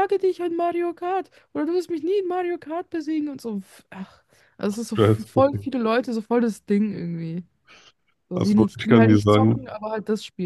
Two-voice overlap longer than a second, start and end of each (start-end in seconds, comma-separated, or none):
8.3-9.7